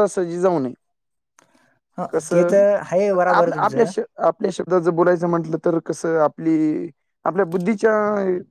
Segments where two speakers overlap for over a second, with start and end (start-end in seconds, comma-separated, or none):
2.1-3.9